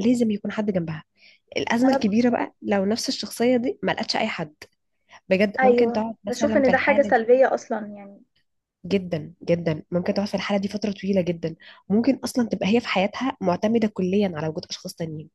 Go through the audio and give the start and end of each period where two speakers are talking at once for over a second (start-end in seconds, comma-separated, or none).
5.6-7.3